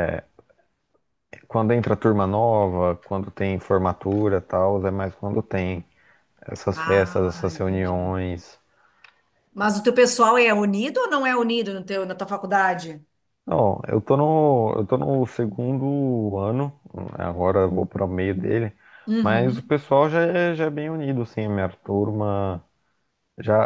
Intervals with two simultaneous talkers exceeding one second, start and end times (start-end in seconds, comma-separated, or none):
6.7-8.2